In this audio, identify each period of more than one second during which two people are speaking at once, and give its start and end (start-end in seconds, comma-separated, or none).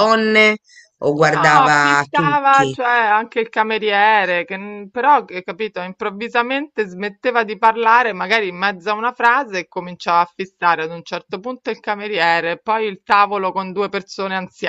1.2-2.8